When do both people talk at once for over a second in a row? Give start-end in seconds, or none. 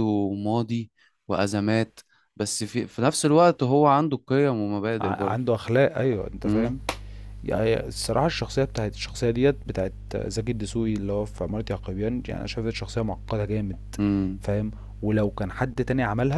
none